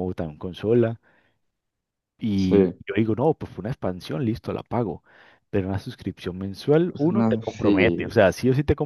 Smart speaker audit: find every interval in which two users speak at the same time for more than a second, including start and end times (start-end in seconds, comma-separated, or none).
6.9-8.2